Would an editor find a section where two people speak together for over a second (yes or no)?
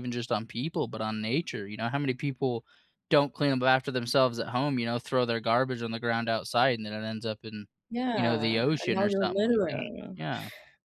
yes